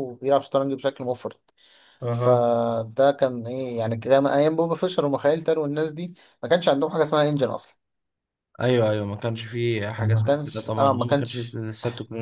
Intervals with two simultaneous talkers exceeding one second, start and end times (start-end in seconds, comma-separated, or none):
10.0-11.6